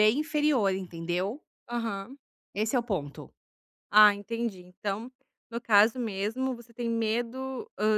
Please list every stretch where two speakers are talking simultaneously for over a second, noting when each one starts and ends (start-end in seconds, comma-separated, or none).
none